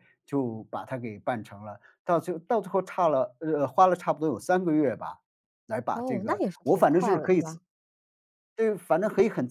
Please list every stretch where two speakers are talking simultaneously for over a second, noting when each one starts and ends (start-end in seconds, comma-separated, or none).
5.9-7.6